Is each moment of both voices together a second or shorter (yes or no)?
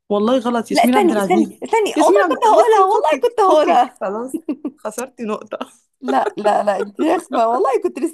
no